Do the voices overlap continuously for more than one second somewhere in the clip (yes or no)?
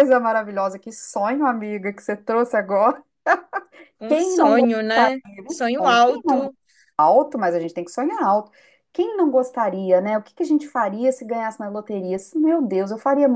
yes